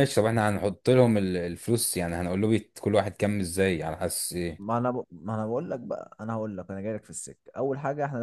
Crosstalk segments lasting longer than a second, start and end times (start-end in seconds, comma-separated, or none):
none